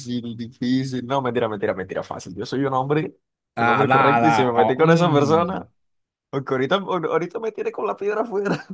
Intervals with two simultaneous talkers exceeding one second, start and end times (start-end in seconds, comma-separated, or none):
3.6-5.7